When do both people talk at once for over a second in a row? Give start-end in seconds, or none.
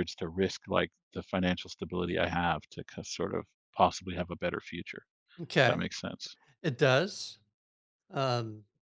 none